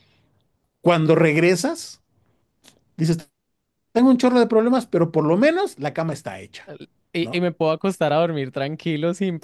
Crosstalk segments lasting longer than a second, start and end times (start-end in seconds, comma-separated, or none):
none